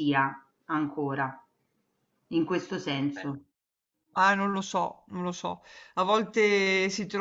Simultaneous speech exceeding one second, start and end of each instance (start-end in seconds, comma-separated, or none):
none